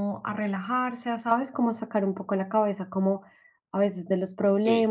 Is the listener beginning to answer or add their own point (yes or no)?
no